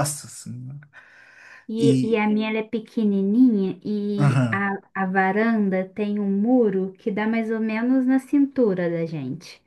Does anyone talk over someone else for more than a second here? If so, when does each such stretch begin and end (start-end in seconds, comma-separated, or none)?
none